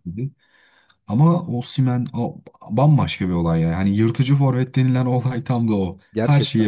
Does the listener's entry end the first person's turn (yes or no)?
yes